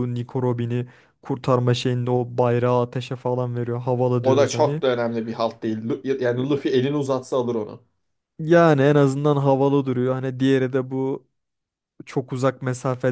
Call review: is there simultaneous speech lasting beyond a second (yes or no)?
no